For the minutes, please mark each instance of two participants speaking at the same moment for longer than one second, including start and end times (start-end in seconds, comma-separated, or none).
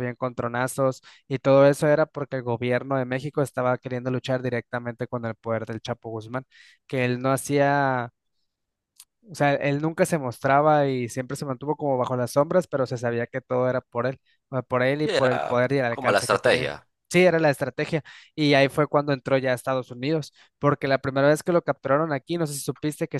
15.0-16.7